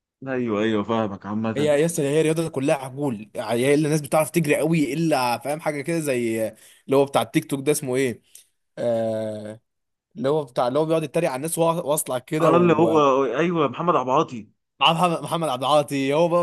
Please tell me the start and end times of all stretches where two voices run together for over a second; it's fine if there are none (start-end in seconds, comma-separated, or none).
none